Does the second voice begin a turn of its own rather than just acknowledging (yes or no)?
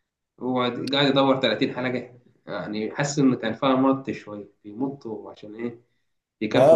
yes